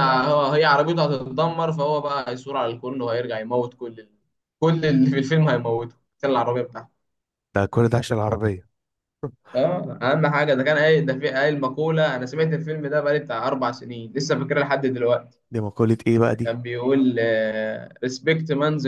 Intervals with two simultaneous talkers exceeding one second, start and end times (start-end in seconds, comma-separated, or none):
none